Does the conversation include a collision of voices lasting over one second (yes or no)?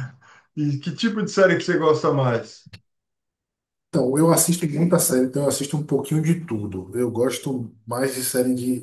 no